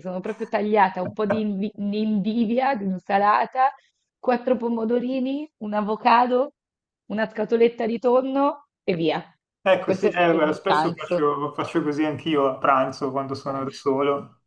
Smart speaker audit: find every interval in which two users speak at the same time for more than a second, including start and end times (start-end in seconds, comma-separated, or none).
9.8-11.3